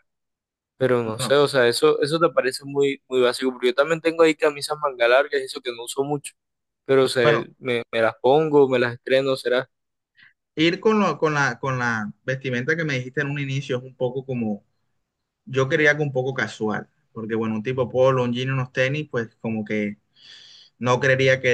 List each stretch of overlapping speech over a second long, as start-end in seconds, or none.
none